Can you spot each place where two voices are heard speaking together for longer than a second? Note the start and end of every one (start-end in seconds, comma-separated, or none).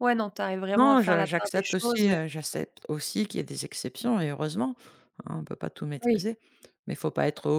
0.8-2.0